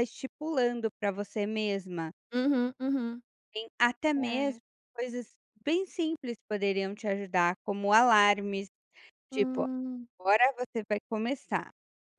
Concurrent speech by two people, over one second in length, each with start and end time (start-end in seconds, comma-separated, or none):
none